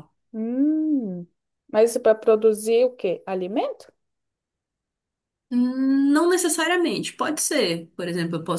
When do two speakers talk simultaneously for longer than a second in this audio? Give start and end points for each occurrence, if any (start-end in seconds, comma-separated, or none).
none